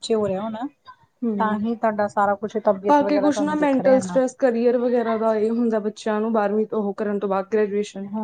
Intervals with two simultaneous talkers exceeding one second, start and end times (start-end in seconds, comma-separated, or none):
2.9-4.2